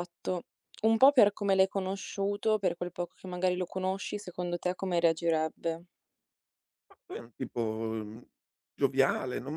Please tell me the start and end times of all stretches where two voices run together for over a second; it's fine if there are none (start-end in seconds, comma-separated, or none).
none